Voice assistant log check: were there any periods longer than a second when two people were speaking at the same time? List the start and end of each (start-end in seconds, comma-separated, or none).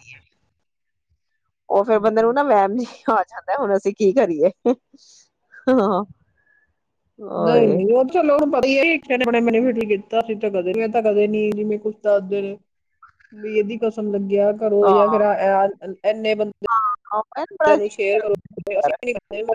none